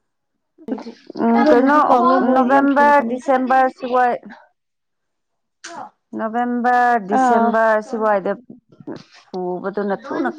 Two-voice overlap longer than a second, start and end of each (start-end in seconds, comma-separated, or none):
1.3-3.2